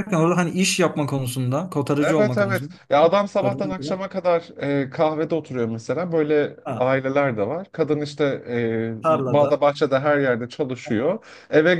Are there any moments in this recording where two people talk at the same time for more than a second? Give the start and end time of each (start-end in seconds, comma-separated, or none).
2.0-3.9